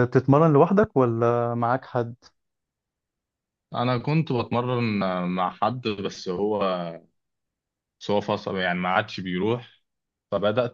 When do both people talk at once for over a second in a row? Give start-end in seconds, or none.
none